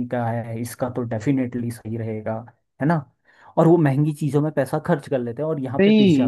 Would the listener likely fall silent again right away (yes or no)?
no